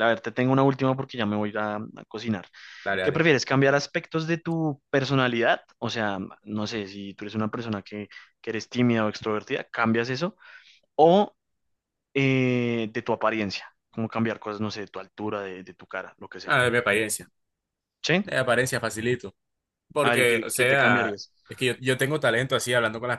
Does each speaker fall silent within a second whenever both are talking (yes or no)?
no